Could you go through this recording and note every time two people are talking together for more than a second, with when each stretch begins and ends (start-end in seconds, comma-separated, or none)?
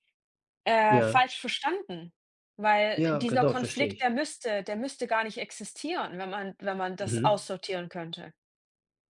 2.9-4.2